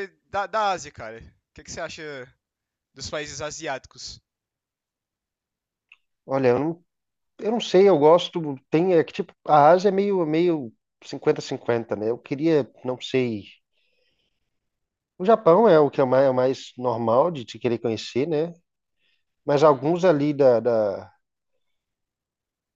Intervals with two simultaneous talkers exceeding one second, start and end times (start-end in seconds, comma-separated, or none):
none